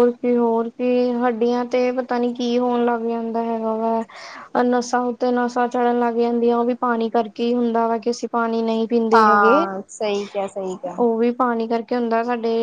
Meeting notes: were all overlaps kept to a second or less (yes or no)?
yes